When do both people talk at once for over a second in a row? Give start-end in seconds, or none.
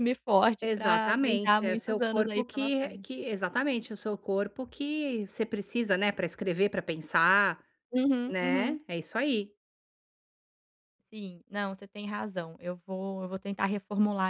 0.6-3.2